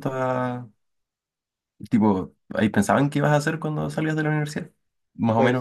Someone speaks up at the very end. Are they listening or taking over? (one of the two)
listening